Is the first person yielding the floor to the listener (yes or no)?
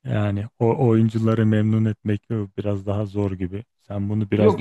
yes